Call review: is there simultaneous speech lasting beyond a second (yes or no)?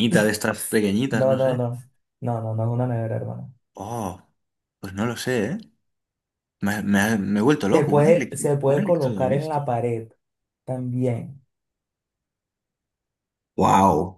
yes